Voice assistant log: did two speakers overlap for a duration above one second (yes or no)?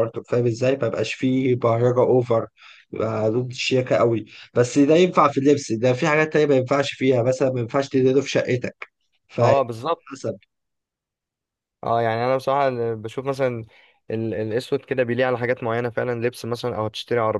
no